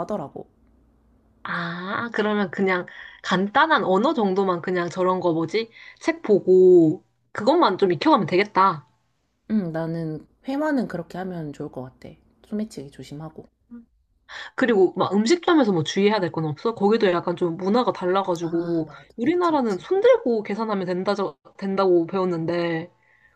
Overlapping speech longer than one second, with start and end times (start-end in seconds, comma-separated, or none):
18.4-19.9